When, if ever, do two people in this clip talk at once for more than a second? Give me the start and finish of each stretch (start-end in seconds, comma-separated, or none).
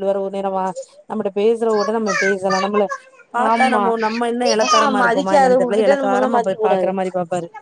4.8-6.9